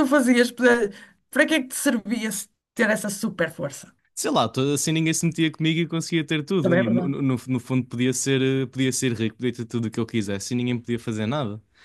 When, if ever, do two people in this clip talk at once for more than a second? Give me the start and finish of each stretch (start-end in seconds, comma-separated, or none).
none